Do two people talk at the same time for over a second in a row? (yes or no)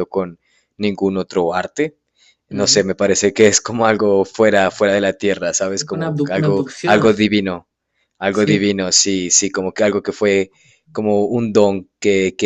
yes